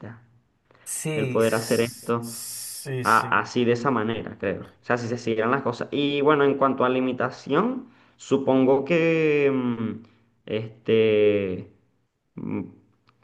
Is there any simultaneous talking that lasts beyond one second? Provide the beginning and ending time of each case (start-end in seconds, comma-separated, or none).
1.1-2.4